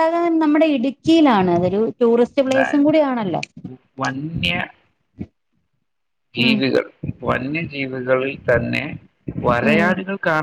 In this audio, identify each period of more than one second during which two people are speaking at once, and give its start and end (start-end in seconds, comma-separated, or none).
none